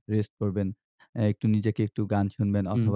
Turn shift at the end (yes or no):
no